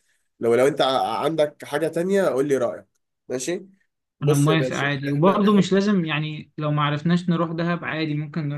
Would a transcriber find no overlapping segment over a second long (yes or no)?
no